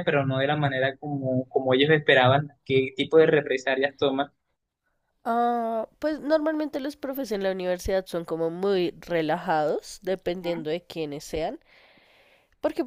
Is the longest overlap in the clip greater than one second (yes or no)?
no